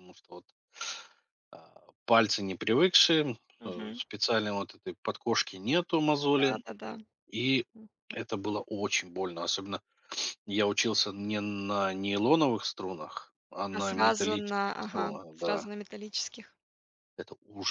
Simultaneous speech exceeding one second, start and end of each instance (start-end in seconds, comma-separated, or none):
13.7-15.7